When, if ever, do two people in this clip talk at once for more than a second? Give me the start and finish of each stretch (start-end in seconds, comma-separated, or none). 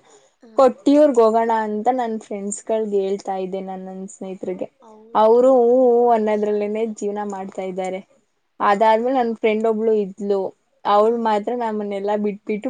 5.2-7.5